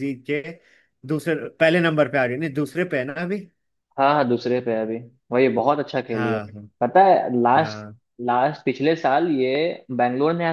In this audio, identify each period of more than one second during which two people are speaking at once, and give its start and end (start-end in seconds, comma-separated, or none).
none